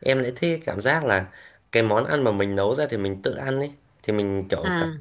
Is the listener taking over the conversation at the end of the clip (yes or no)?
no